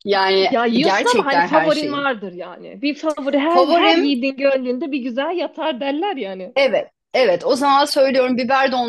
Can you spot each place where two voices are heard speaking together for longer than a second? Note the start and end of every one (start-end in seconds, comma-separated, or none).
0.5-2.0